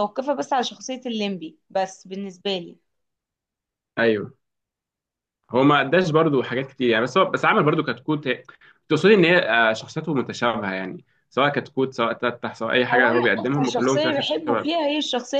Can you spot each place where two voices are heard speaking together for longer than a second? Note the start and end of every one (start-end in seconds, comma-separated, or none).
12.9-14.7